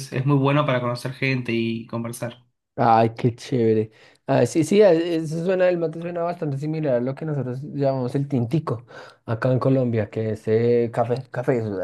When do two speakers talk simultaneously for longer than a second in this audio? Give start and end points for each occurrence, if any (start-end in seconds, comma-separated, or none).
none